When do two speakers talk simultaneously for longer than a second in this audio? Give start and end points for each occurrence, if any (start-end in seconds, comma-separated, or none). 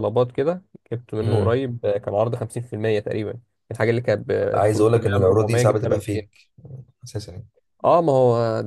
4.7-6.2